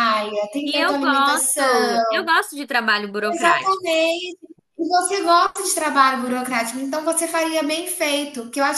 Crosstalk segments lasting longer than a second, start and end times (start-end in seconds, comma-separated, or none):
0.6-2.0